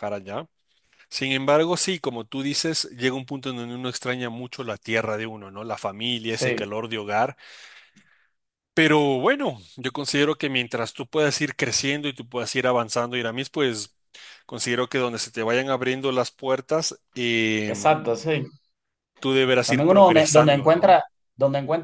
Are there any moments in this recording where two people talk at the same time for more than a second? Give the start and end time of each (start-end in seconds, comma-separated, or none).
19.6-21.0